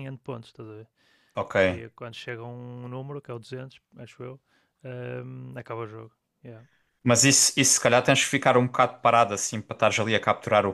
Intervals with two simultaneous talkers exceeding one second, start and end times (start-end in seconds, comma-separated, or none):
none